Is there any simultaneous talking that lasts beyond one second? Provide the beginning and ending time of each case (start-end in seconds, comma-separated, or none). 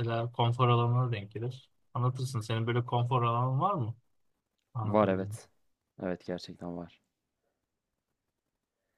none